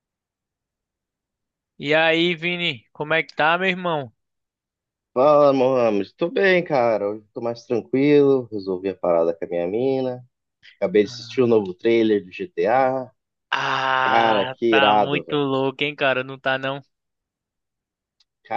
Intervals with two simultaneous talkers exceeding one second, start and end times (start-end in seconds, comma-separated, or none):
14.1-15.4